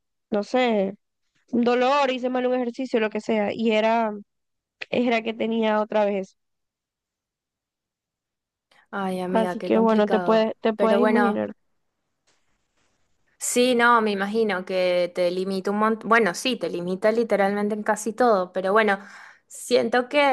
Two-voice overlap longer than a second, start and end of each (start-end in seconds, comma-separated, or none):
9.3-11.4